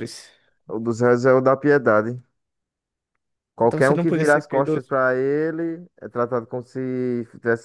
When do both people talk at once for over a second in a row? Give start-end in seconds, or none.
3.6-4.9